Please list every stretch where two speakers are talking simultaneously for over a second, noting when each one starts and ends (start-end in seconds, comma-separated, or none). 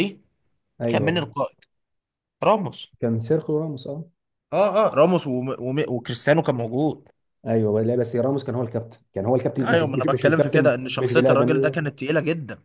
9.6-11.8